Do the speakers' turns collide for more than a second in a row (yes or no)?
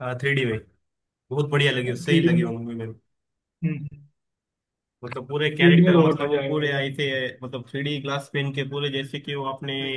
yes